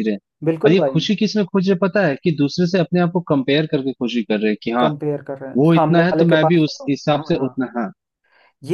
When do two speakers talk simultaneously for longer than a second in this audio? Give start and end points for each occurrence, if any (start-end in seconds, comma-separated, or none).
5.6-7.6